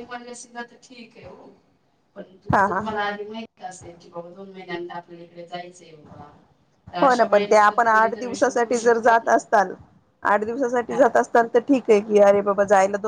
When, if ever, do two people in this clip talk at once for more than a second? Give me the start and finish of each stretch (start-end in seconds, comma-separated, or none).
7.0-9.4